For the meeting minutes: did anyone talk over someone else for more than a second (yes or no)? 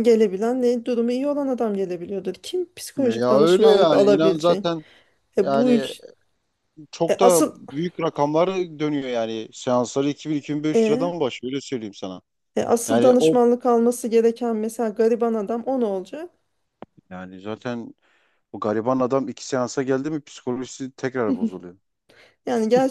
yes